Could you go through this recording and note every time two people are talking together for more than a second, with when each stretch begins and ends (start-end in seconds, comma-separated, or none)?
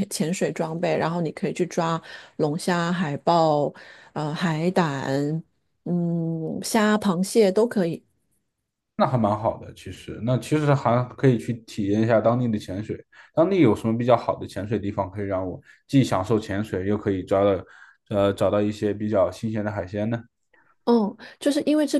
none